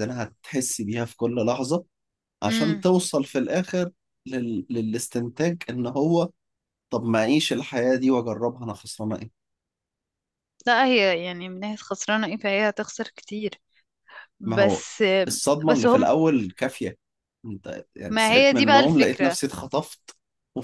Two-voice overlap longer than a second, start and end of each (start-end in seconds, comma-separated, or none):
18.1-19.4